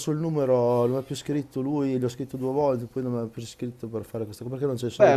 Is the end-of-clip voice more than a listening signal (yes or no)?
yes